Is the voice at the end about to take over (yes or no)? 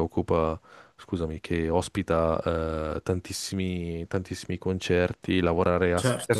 no